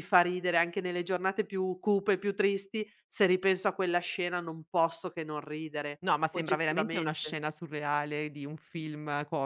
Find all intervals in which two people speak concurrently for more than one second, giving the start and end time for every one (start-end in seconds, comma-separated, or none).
6.0-7.4